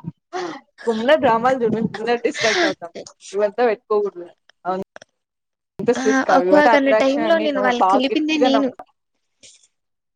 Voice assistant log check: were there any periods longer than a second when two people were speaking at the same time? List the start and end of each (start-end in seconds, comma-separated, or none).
6.0-8.7